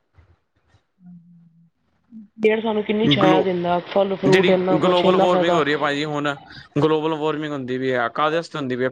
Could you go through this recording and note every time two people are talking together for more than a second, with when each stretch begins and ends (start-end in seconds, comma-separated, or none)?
none